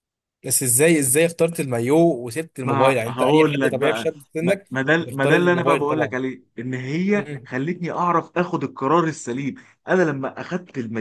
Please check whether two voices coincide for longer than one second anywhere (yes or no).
yes